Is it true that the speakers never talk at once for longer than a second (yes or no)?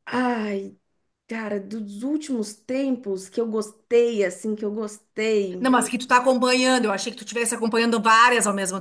yes